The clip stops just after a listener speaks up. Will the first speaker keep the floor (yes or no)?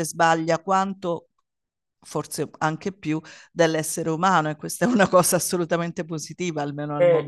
no